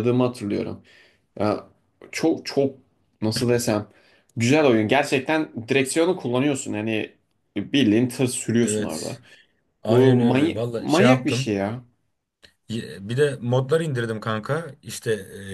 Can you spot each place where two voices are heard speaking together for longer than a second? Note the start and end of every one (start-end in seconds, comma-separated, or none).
9.9-11.6